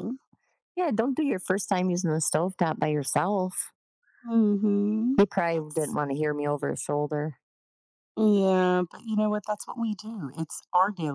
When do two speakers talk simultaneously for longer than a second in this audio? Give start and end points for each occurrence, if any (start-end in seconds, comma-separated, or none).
none